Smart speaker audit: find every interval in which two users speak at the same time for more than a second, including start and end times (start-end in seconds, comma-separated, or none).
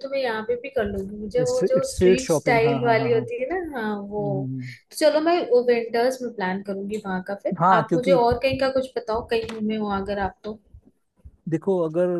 1.5-3.2